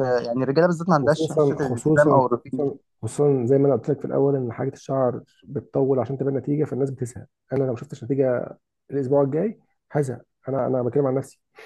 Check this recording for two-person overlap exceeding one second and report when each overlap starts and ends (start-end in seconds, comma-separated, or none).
1.0-2.7